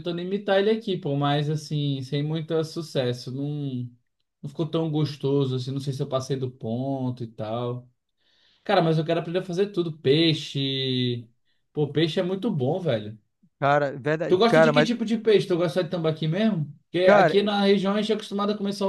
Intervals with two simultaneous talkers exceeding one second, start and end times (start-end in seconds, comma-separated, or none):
none